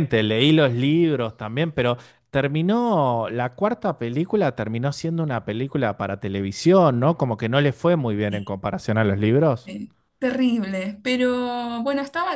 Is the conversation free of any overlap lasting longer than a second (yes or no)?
yes